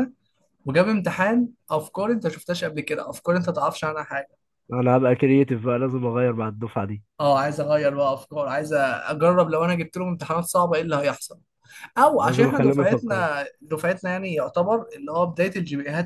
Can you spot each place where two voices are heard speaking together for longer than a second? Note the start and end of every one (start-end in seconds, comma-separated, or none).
12.0-13.2